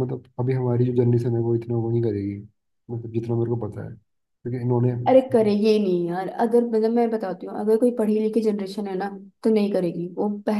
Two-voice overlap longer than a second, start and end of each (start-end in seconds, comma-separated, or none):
none